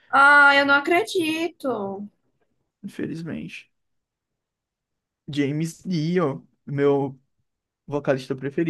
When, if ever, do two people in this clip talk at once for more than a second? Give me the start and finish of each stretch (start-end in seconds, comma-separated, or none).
none